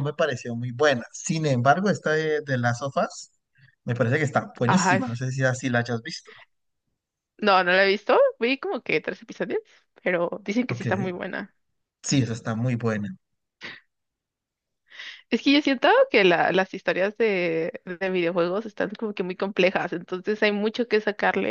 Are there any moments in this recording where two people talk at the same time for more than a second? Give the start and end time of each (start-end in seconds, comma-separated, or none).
none